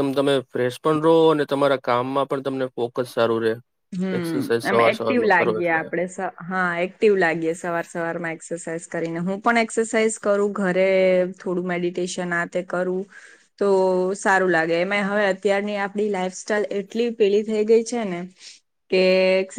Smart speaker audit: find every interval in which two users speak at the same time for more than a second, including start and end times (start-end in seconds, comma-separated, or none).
none